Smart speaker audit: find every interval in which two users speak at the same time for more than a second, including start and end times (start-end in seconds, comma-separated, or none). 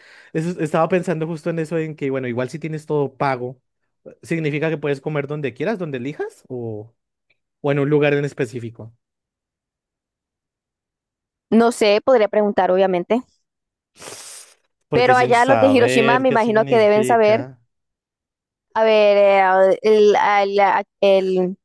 14.9-17.4